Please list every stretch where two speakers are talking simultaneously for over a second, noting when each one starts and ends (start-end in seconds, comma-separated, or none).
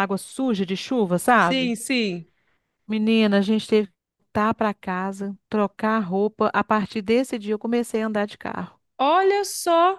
none